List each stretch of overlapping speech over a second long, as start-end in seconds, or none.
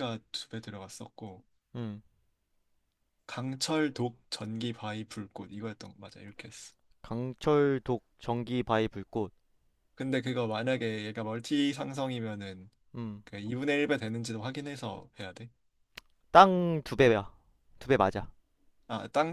none